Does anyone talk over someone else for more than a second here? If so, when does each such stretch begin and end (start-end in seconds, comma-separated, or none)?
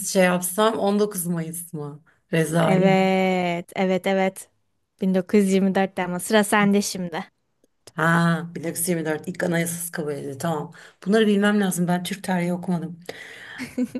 none